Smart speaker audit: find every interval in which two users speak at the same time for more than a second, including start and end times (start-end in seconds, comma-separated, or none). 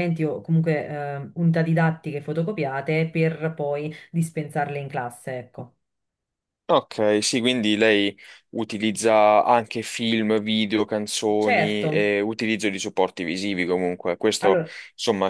none